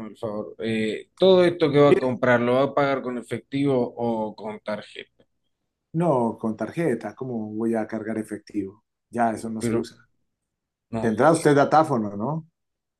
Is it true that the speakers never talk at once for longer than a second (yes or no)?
yes